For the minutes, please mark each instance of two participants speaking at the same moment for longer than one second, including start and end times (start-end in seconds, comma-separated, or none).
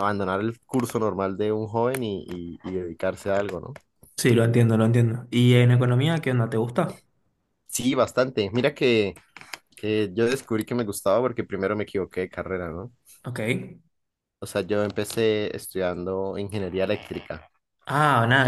none